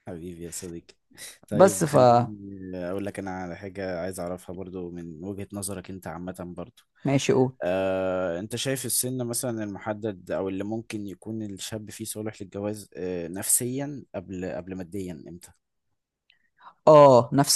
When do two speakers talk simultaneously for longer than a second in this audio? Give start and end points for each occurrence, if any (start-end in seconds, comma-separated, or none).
none